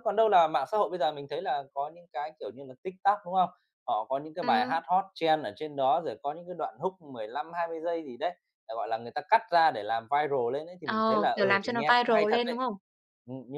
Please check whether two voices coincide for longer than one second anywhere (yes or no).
yes